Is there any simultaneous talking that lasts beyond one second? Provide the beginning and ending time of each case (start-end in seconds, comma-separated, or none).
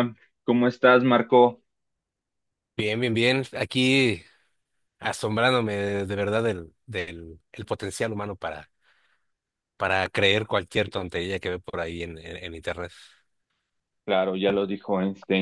none